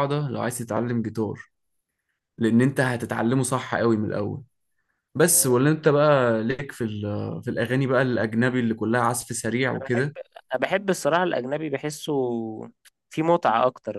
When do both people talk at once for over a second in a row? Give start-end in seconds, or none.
none